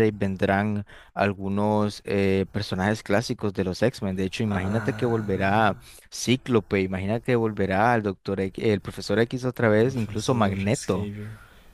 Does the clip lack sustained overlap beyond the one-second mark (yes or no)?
no